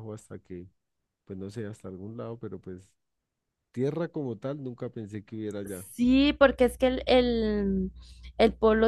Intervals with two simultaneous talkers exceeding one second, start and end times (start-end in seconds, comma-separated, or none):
none